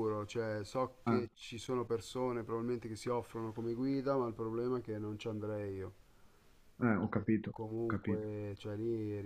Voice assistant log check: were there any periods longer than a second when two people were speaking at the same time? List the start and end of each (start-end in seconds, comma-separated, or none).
6.9-8.3